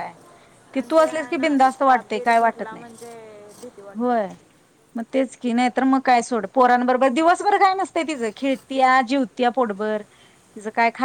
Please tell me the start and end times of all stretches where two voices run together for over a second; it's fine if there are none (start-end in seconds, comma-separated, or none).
1.0-2.9